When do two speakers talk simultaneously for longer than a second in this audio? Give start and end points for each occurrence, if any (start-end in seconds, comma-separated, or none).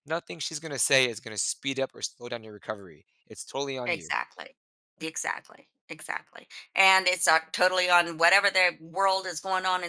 none